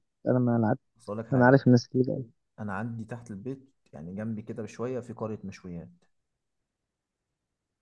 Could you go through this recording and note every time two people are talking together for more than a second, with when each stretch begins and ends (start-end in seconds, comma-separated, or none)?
none